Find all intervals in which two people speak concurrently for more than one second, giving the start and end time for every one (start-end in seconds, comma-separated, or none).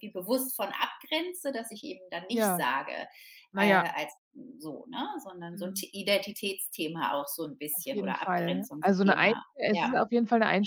7.7-9.9